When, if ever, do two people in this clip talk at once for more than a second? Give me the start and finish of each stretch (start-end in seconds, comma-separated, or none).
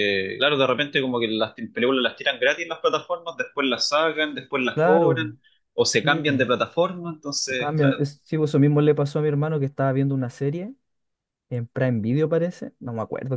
none